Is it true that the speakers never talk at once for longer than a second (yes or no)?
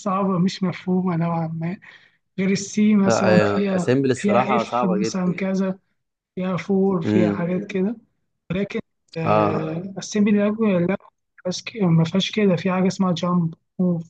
no